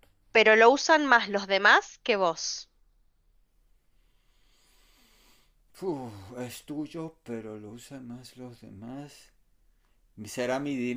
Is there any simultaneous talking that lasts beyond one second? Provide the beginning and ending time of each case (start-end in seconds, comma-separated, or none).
none